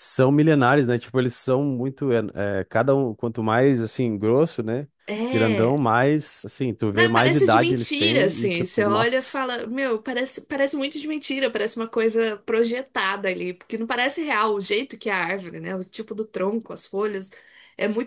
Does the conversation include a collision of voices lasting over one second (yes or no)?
yes